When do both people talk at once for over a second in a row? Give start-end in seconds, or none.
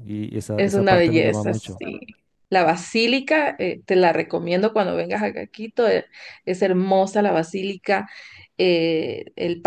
0.6-1.8